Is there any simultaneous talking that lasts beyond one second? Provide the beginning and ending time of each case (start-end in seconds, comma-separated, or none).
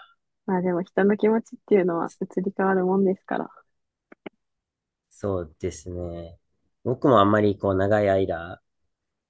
none